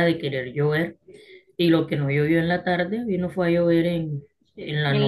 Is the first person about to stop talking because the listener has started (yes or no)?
yes